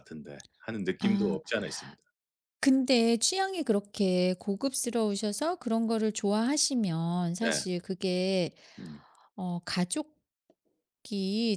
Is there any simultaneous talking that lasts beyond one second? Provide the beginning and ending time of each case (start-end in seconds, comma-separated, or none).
none